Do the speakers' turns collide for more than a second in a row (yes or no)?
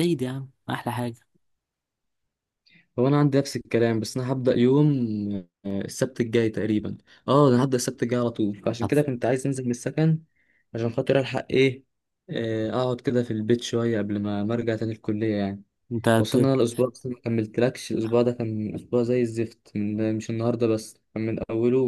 no